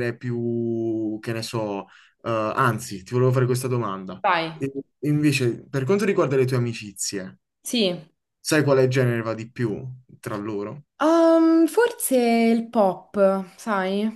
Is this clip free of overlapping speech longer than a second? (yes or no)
yes